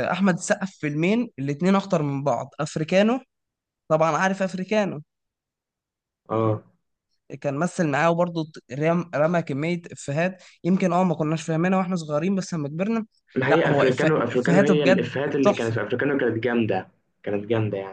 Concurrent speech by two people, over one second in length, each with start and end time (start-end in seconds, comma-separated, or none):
13.4-15.8